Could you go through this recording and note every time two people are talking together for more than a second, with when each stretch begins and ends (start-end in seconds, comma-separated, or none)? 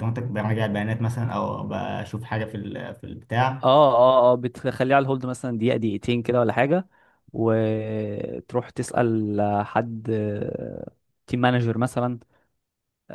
none